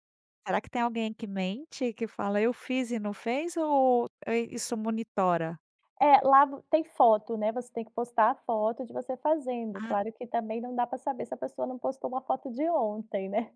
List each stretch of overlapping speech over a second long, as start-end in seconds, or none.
none